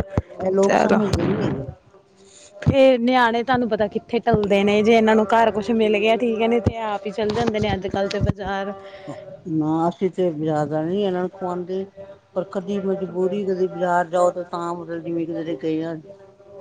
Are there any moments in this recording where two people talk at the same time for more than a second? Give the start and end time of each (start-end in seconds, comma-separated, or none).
none